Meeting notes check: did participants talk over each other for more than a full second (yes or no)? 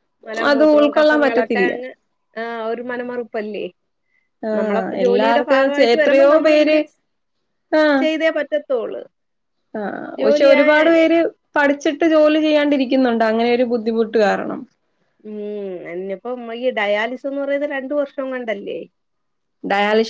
yes